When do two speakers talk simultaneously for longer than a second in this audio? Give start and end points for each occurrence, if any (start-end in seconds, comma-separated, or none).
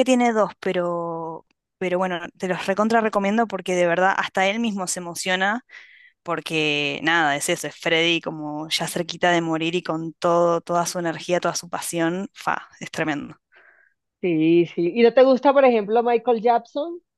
none